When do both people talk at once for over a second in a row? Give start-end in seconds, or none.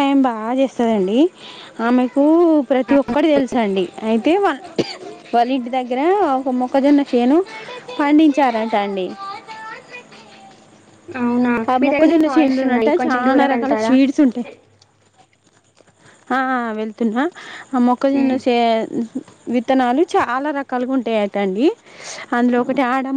11.7-13.9